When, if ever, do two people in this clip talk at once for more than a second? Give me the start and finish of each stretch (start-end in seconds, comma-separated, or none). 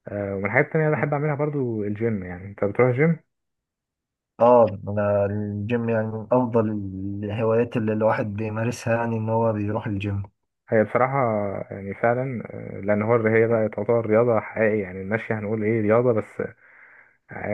none